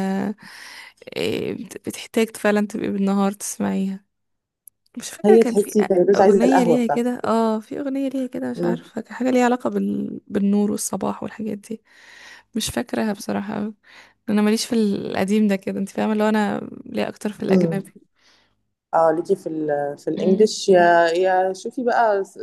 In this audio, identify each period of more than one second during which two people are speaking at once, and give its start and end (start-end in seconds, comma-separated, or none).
5.2-7.1